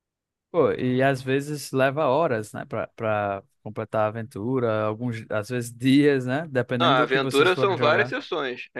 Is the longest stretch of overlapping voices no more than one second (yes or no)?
no